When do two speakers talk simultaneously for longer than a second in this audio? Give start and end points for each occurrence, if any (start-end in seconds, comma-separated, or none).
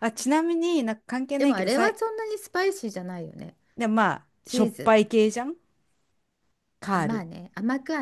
none